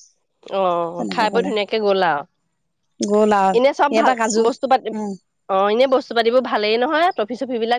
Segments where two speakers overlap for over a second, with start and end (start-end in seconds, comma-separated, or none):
none